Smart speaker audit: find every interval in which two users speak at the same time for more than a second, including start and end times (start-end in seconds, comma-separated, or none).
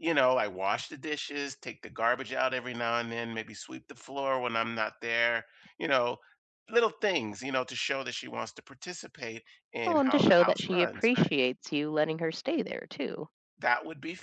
9.8-11.3